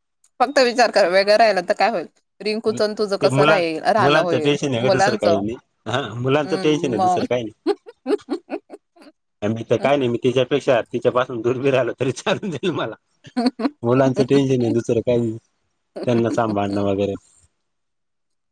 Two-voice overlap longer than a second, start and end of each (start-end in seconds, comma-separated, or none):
3.2-5.4